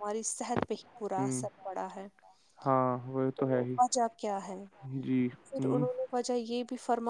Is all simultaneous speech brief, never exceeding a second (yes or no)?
yes